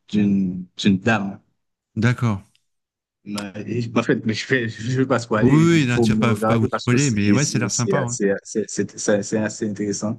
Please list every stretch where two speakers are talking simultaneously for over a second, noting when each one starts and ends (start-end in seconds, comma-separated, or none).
5.4-8.2